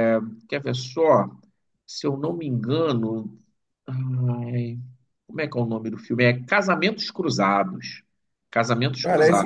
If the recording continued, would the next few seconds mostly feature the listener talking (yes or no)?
yes